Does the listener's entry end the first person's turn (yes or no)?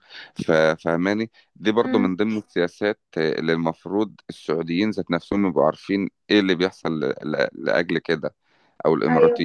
no